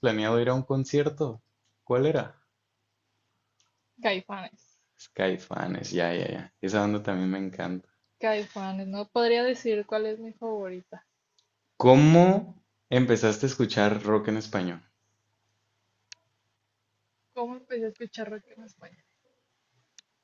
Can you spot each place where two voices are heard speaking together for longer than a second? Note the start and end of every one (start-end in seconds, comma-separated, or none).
none